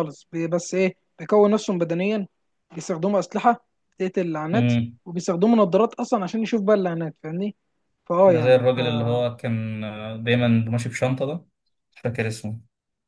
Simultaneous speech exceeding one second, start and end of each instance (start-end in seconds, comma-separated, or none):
none